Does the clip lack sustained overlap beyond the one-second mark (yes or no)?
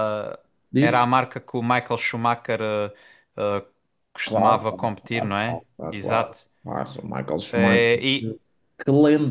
no